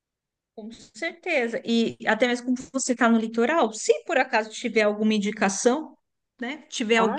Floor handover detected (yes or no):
no